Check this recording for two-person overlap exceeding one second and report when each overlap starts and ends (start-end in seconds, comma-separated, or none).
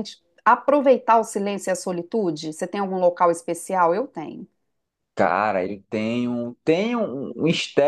none